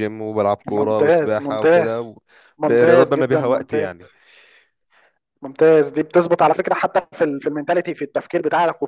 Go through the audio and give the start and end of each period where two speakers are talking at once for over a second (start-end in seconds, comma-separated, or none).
0.7-1.9, 2.6-3.9